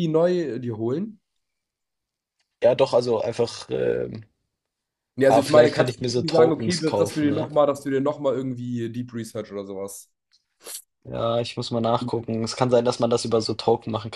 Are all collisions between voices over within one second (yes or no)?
no